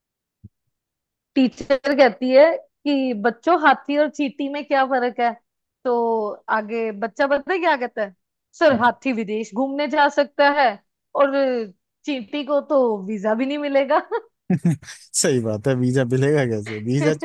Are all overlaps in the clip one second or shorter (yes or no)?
yes